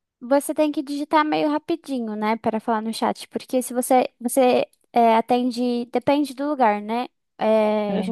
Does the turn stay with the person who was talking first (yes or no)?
yes